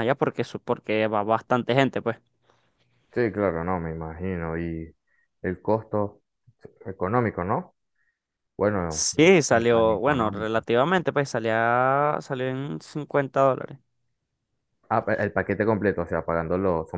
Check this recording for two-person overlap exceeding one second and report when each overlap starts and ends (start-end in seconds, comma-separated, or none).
8.9-10.6